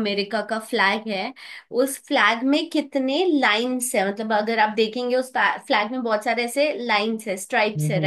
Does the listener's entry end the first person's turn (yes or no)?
no